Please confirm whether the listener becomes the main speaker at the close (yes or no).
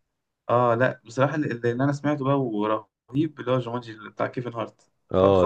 yes